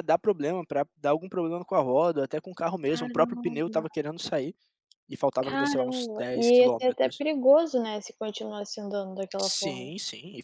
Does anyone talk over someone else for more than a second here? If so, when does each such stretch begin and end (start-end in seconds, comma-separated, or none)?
5.4-7.2